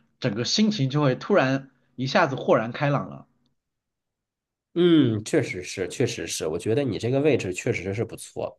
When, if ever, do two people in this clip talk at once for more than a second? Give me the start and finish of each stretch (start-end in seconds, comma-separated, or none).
none